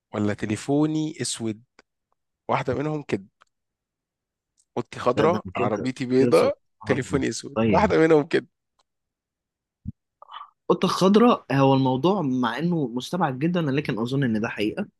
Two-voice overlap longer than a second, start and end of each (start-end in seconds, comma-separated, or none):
5.2-7.9